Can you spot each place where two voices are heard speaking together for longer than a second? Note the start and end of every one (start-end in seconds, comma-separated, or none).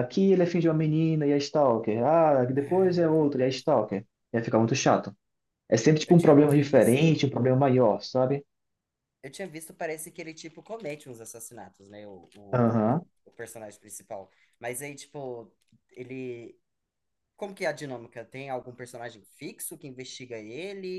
6.1-7.3